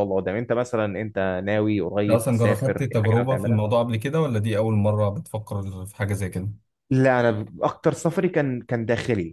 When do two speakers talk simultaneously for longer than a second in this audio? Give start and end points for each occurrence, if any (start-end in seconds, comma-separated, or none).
2.0-3.6